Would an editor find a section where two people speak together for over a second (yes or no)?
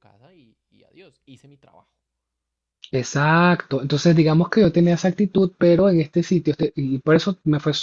no